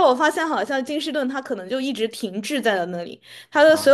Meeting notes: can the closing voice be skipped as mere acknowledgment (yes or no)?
yes